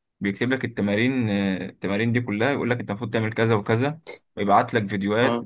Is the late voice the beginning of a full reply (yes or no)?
no